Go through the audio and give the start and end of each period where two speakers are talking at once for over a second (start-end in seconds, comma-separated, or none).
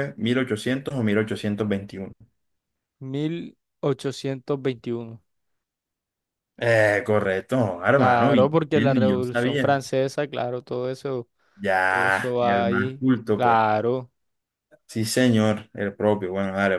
7.9-9.8, 11.9-13.6